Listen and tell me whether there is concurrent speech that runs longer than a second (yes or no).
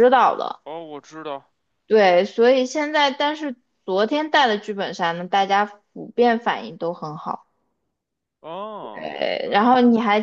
no